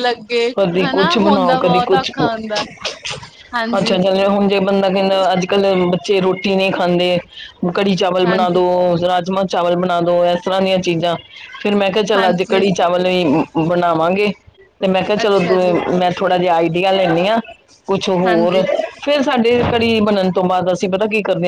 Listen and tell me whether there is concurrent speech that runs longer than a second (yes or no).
yes